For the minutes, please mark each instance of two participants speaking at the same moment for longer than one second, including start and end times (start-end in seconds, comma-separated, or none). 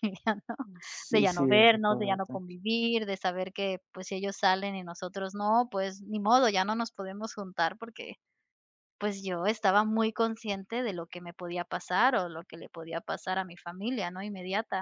1.1-2.4